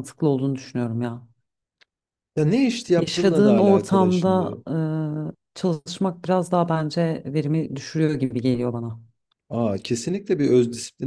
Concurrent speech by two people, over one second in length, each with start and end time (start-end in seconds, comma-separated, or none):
3.0-4.6